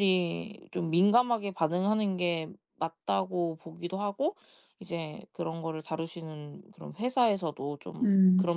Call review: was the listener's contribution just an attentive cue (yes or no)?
yes